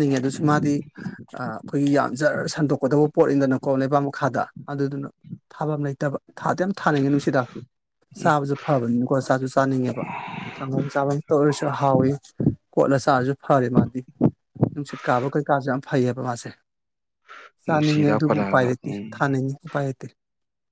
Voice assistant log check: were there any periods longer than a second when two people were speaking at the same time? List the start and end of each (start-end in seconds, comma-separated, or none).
17.7-19.3